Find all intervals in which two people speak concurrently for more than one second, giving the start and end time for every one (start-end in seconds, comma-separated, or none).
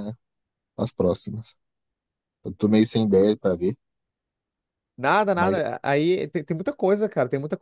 none